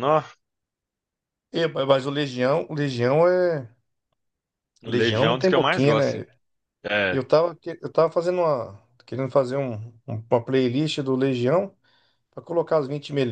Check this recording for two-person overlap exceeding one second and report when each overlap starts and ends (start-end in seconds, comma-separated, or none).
4.8-6.3